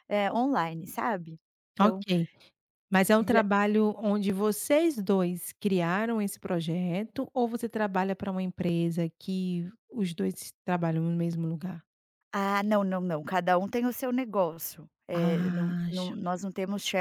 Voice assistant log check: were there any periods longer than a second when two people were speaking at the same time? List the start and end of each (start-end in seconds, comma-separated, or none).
15.1-16.3